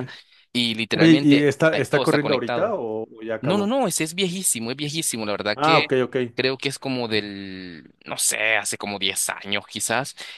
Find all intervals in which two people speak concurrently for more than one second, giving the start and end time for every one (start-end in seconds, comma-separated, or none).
0.9-2.8